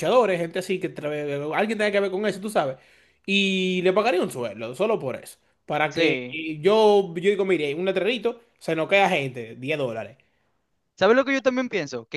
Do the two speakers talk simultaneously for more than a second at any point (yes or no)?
no